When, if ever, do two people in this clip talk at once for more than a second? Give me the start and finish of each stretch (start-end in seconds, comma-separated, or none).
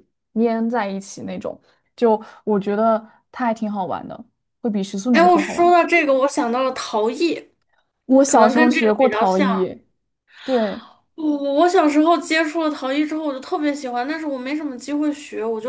8.3-9.7